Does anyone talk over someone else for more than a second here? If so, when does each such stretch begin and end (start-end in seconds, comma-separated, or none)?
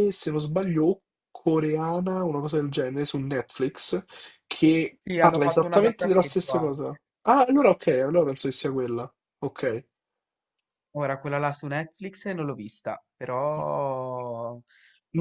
5.0-7.0